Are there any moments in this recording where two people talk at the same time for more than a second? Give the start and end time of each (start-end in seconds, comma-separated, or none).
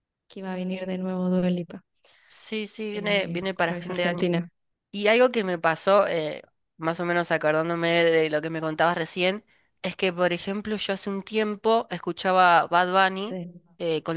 2.9-4.3